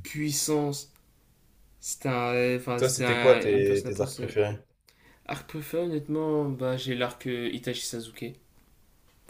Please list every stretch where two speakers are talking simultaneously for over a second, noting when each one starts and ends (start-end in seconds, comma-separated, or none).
2.8-4.3